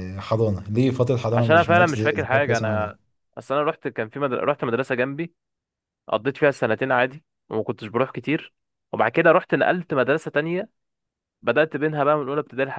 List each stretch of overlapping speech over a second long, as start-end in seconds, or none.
1.3-3.0